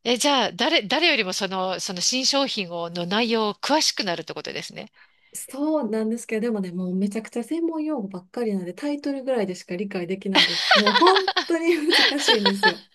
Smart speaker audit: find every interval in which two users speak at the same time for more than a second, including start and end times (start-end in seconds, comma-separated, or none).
none